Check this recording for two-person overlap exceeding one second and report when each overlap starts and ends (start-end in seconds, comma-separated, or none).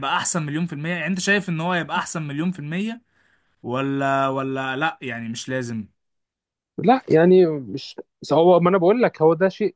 none